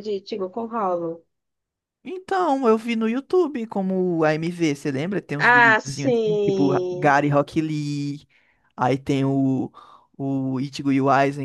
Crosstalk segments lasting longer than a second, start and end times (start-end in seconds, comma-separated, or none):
5.4-7.1